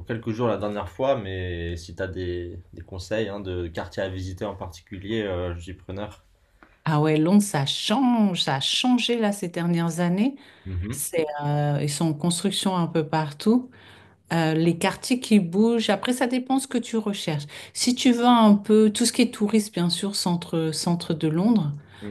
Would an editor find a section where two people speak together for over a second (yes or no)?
no